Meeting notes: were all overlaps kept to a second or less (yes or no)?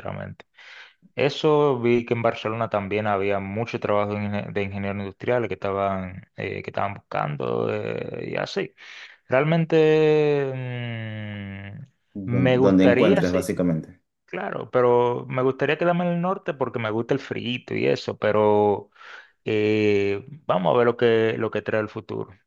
no